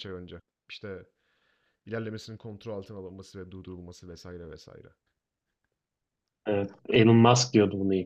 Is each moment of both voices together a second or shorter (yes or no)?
yes